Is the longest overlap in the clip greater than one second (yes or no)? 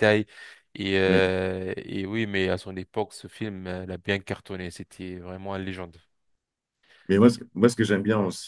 no